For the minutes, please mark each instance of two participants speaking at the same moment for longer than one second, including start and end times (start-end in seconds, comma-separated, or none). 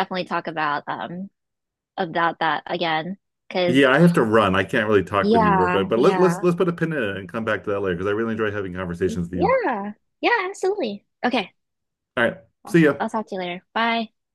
5.2-6.5